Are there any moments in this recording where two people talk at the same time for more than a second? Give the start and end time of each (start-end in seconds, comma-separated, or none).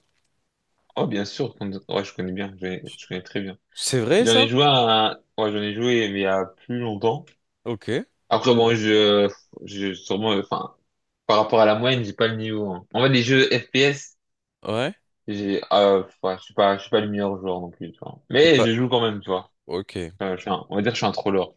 none